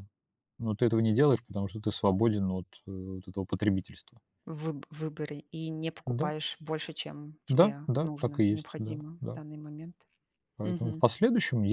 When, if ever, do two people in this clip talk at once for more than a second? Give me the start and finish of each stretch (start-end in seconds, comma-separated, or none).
7.5-9.4